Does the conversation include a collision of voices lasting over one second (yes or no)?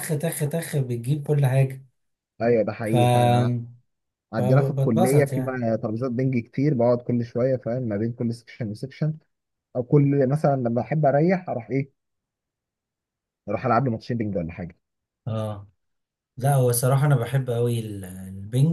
yes